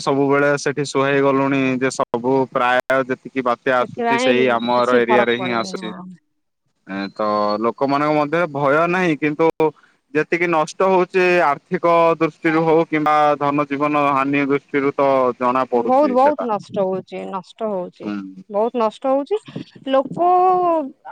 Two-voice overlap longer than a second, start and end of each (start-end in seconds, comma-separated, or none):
3.8-5.9